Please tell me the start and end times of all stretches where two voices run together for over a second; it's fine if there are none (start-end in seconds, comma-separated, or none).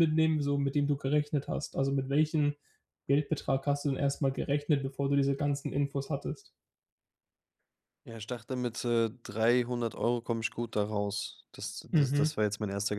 none